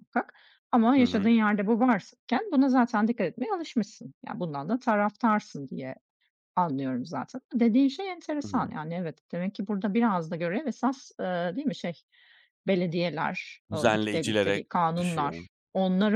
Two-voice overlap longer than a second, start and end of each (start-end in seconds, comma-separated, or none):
13.7-15.4